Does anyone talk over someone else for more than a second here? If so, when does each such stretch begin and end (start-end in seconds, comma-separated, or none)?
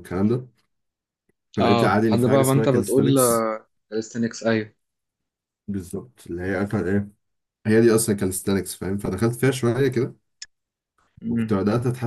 1.6-3.0